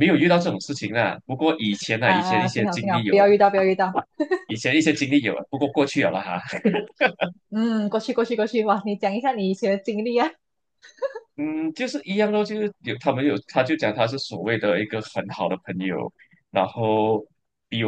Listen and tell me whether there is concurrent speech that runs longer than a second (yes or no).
yes